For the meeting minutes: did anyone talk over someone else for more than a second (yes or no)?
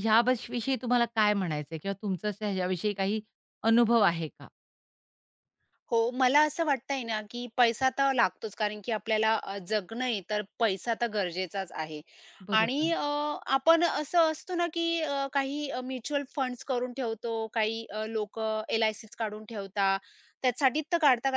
no